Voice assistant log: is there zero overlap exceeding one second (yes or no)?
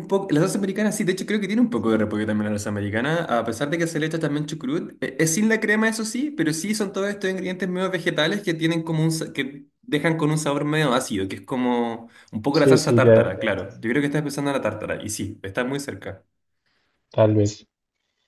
no